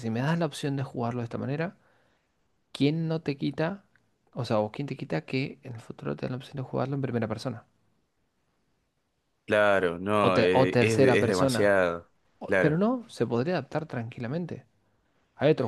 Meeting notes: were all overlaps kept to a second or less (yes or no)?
no